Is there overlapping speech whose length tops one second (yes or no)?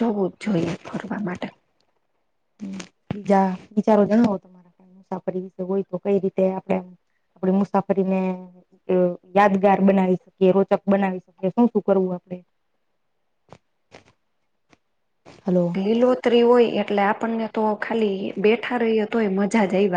no